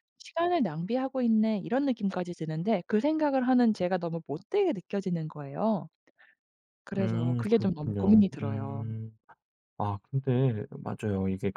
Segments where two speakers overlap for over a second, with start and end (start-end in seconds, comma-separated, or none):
7.0-8.8